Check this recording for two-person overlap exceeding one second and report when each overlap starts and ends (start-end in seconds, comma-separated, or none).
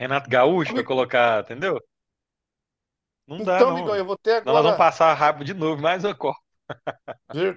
3.4-4.9